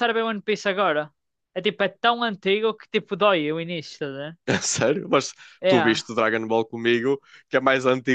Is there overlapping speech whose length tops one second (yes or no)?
no